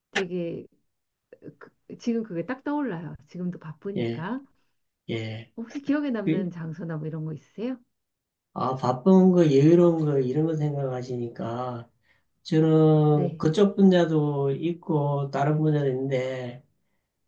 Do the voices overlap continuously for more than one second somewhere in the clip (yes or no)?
no